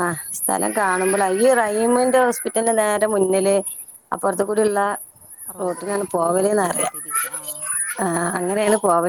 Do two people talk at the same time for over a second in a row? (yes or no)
yes